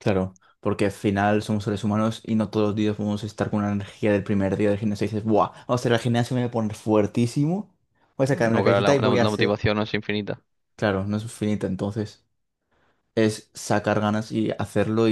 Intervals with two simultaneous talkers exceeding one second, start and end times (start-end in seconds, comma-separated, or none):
8.3-9.6